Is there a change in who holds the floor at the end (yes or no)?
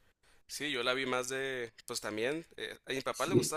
no